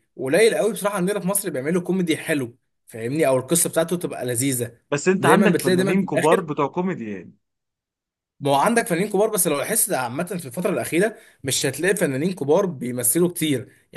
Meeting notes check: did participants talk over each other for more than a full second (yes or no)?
yes